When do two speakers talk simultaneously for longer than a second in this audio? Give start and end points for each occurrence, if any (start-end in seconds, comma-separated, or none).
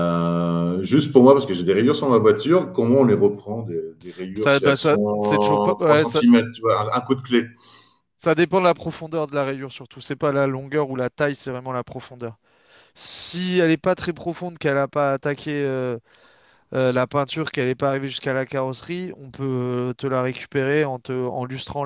4.3-6.2